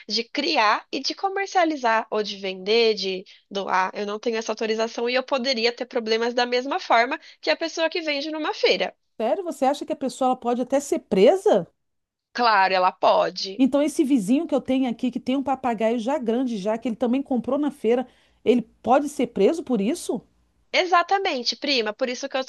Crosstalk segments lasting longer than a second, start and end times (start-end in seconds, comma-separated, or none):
none